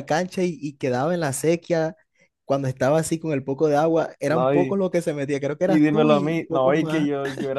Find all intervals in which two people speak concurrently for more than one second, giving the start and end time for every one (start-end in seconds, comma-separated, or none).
5.7-7.1